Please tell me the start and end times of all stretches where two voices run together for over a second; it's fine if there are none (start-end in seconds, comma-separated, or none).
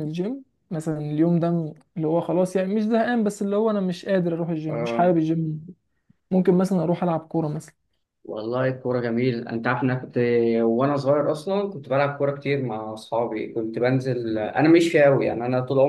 none